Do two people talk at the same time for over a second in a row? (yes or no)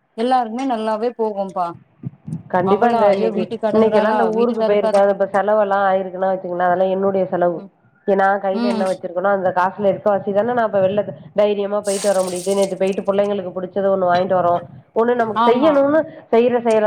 yes